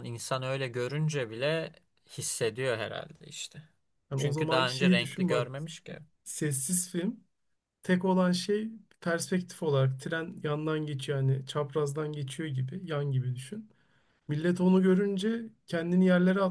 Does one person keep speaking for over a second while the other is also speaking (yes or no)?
yes